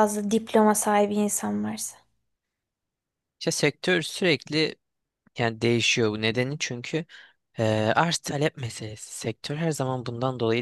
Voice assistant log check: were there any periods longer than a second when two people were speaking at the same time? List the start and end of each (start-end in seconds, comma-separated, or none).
none